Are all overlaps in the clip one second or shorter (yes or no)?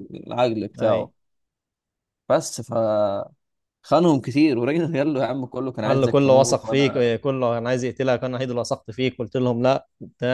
no